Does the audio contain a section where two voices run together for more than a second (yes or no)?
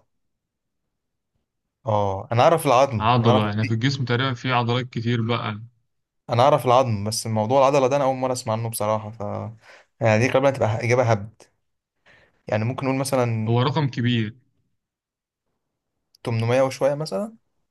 no